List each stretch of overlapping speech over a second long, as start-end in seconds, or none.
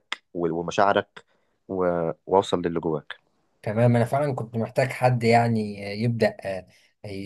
none